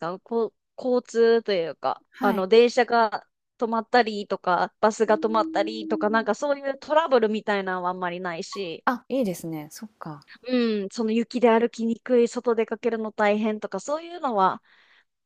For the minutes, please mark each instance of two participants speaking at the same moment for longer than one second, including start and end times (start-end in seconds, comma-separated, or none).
5.1-6.3